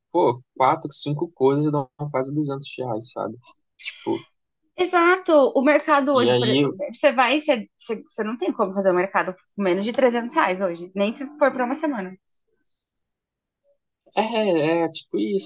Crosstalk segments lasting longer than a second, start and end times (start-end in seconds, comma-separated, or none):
none